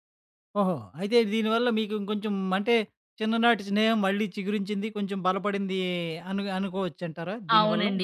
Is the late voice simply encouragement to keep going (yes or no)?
no